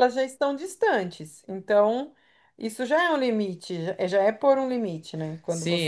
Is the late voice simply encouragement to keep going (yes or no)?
no